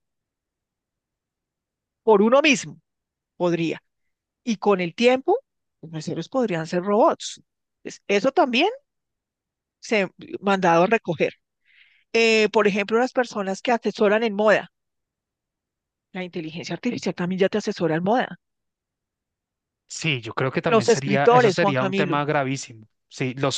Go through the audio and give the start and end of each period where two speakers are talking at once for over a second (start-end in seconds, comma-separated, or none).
20.6-22.2